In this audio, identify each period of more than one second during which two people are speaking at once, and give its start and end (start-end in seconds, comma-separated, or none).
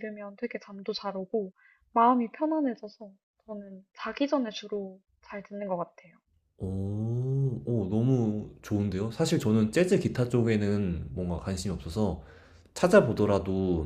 none